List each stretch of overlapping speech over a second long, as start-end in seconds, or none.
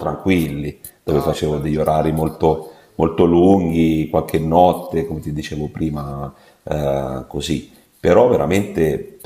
1.1-3.0